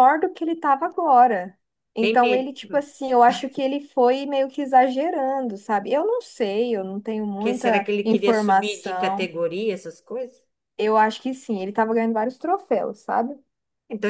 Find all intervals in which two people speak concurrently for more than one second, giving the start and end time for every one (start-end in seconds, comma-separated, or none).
7.4-9.3